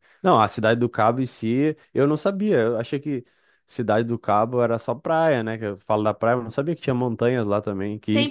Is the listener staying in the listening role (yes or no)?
no